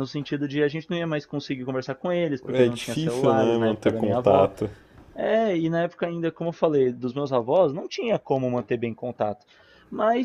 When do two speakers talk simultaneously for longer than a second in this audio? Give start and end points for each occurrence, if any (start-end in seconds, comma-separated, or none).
2.5-4.5